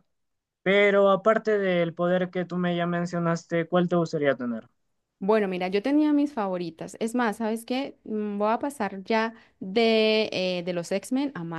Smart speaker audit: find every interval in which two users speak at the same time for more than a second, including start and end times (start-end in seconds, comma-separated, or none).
none